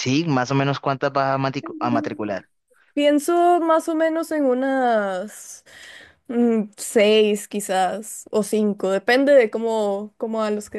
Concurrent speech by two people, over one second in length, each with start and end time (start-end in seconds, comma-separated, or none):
none